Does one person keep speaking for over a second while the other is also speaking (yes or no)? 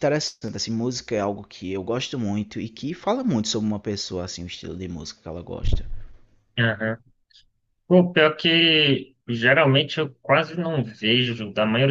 no